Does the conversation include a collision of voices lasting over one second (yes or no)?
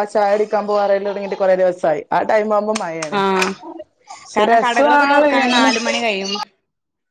yes